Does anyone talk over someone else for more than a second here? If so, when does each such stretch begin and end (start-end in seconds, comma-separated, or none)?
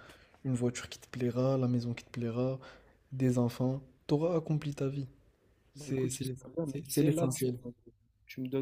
5.8-7.6